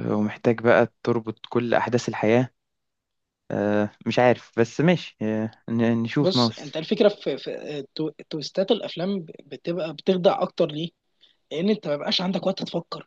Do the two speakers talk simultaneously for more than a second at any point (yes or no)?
no